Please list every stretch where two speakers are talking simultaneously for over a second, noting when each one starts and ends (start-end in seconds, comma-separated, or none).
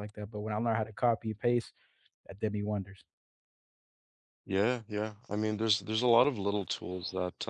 none